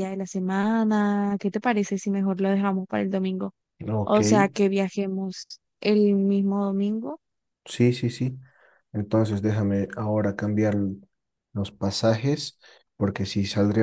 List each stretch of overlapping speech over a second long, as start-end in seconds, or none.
none